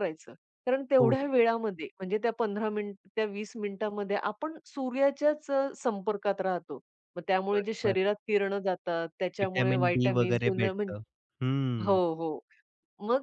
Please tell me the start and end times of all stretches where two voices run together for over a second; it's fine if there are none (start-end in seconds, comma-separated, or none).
9.4-10.7